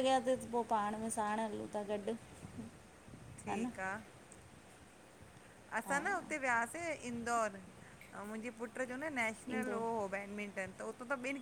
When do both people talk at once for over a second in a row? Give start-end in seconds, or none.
none